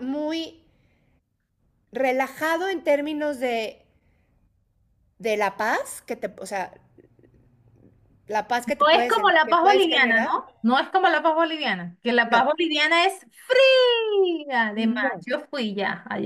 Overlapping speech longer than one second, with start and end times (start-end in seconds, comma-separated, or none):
8.8-10.3